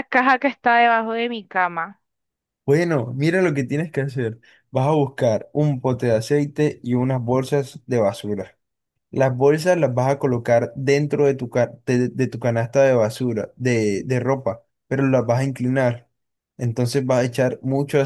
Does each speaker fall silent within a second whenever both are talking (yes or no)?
yes